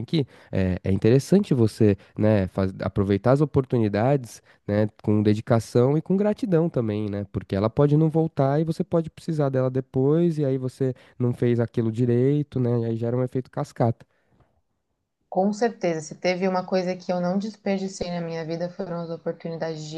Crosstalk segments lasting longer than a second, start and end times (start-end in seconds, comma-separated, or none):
none